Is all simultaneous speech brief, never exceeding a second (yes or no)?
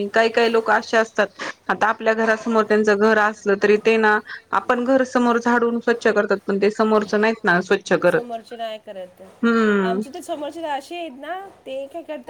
yes